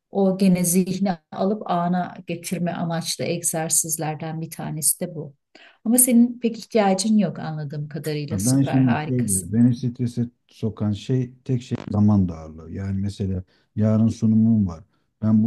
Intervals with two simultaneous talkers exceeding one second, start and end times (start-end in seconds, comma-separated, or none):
8.3-9.5